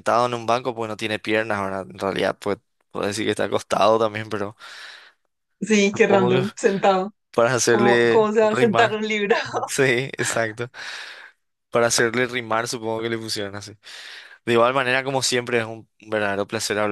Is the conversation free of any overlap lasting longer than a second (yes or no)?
no